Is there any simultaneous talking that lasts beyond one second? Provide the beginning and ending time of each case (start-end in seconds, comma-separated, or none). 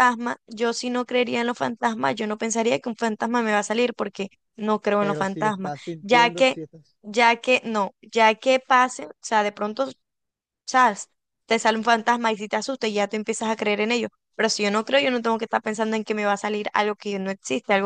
5.0-6.6